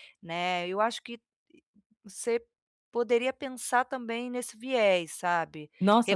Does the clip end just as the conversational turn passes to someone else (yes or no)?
yes